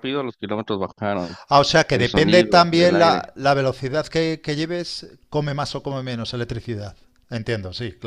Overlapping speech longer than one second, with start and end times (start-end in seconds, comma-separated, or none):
1.9-3.3